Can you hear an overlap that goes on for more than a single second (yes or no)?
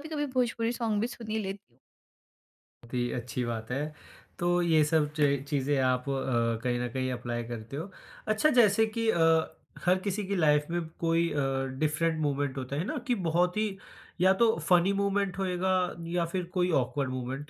no